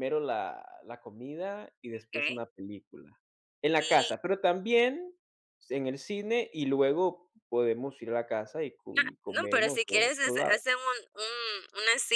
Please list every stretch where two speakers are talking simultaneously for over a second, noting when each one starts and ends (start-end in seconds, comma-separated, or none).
9.0-10.6